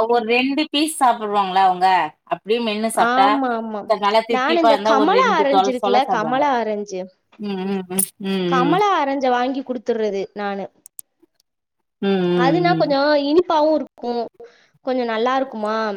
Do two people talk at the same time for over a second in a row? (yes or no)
yes